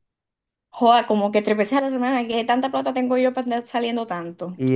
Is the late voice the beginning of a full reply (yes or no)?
yes